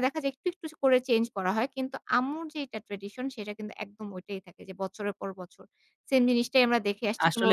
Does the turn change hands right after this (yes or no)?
yes